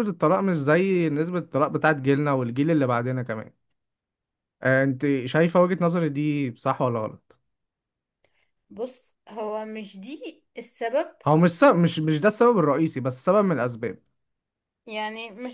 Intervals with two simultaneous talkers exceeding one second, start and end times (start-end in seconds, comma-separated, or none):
none